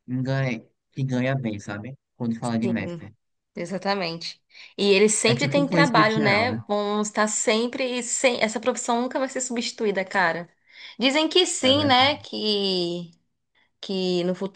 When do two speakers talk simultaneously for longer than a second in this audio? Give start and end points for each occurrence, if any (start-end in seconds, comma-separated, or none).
5.2-6.6